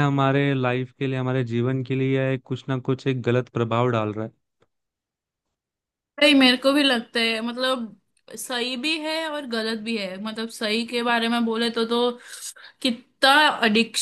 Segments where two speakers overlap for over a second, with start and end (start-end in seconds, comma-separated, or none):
none